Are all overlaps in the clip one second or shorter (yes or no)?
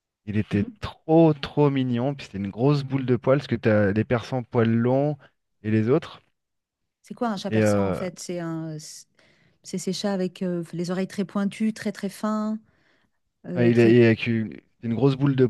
yes